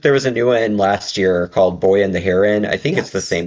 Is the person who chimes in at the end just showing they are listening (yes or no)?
yes